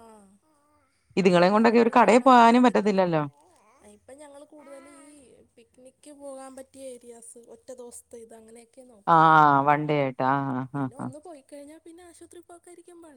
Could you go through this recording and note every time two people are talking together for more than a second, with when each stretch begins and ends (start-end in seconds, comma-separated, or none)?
1.2-2.9